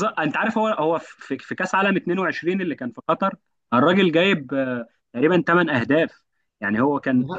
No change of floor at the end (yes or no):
yes